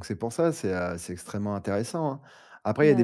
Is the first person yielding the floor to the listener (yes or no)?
no